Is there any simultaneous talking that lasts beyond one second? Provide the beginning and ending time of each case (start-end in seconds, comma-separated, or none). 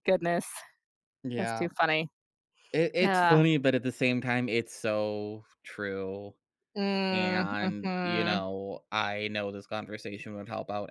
7.1-8.4